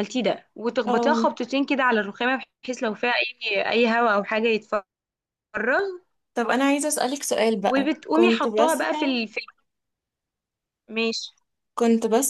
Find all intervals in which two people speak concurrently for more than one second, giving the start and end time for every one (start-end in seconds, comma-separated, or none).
7.6-9.2